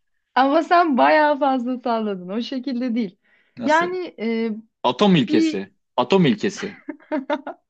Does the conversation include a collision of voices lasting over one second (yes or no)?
no